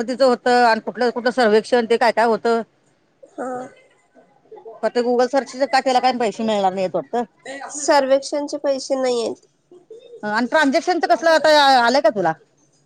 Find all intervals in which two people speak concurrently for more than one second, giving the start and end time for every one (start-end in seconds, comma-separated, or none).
none